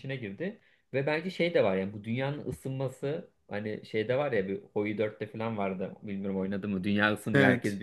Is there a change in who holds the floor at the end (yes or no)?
no